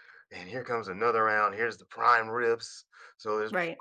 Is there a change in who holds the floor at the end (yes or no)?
no